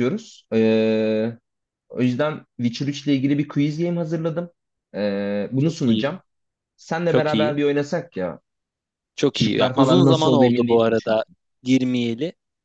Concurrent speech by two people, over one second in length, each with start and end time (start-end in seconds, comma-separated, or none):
9.3-11.2